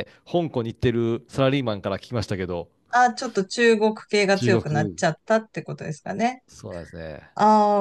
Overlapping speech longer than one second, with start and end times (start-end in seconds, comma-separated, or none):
none